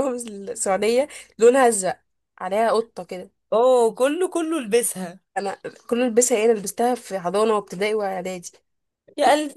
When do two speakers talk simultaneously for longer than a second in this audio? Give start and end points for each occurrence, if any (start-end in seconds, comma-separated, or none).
none